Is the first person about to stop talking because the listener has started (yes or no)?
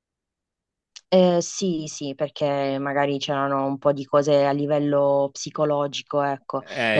no